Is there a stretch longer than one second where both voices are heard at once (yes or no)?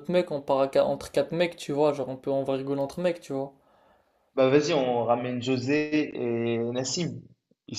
no